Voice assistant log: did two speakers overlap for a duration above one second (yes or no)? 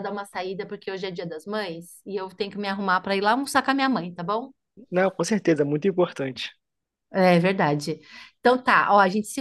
no